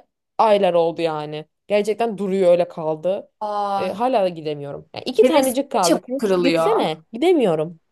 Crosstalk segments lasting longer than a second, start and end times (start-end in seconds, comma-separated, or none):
5.2-6.9